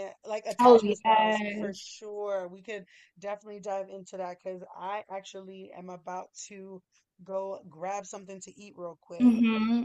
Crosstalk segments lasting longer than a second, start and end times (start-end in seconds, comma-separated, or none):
0.6-1.8